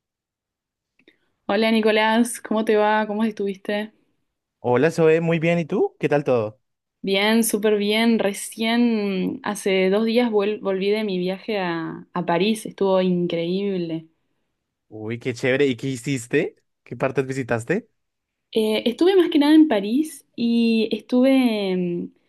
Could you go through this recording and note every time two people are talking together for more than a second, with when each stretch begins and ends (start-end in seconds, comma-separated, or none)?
none